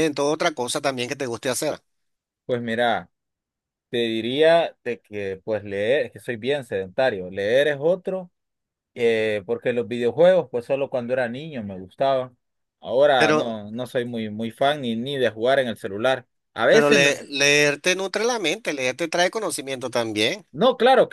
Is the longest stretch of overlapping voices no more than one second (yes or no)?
yes